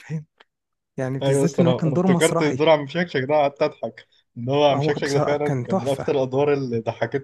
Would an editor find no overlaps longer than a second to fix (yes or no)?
no